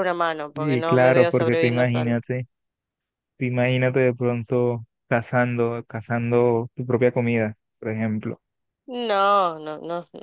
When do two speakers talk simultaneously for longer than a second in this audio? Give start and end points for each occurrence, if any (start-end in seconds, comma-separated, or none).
0.5-2.2